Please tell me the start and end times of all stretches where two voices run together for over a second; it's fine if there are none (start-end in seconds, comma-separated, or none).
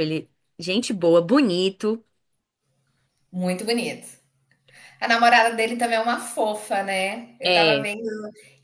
none